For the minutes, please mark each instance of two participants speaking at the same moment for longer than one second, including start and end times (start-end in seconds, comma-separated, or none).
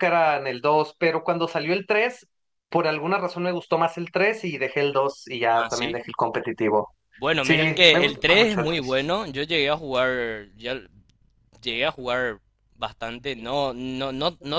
7.4-9.0